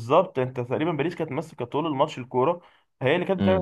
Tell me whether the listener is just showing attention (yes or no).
yes